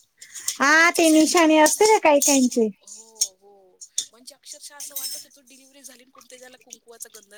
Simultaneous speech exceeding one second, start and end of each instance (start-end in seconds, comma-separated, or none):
0.7-2.7